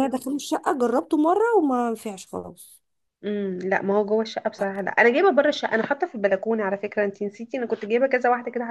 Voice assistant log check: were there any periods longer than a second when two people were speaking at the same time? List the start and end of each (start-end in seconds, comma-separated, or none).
none